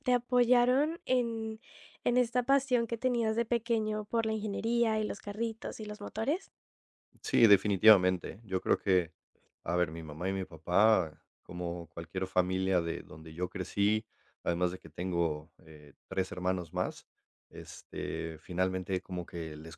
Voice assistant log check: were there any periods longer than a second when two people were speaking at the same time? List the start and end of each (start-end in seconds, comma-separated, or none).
none